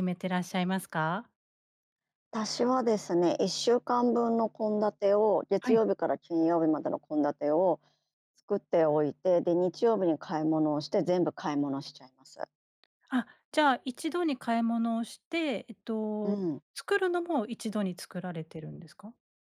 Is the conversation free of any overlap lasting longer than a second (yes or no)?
yes